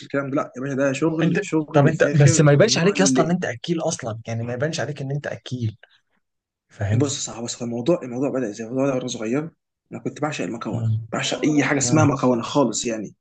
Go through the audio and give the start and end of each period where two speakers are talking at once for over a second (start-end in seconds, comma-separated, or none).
1.2-3.0